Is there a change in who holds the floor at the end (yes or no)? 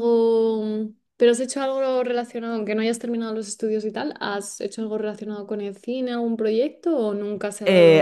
yes